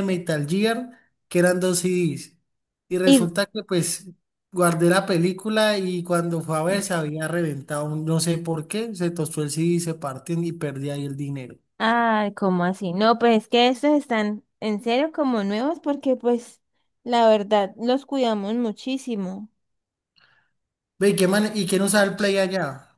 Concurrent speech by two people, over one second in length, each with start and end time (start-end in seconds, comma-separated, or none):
none